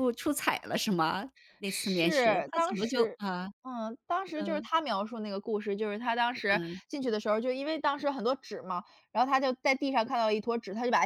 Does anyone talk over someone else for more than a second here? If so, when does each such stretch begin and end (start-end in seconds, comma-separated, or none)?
1.6-3.2